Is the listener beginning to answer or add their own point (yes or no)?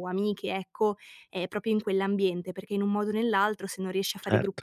no